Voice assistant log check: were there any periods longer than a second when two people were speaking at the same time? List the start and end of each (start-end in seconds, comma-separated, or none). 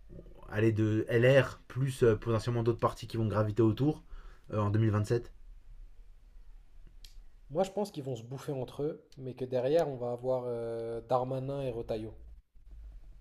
none